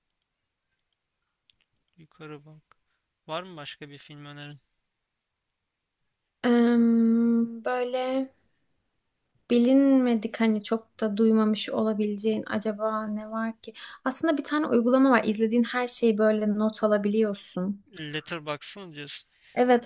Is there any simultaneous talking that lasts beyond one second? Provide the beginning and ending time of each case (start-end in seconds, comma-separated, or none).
none